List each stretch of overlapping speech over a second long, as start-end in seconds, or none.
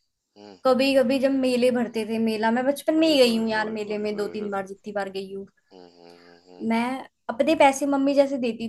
3.0-4.5